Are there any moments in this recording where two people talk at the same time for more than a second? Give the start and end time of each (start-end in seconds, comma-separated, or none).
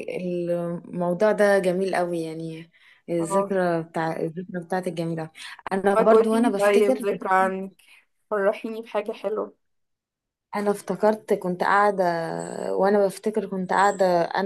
5.8-7.0